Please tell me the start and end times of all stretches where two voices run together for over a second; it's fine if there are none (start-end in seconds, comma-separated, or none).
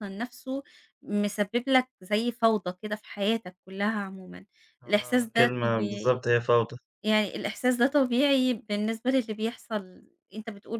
4.9-6.2